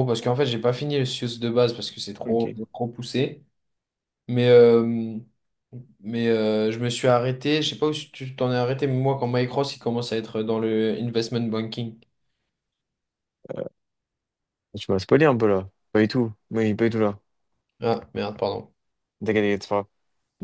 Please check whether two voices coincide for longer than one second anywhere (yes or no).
no